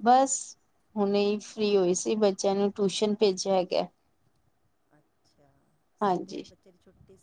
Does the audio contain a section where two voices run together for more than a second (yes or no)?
no